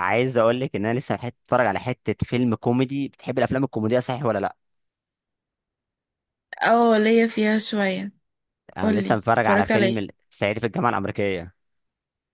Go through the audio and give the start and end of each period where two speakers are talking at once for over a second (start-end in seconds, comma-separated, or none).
8.8-10.0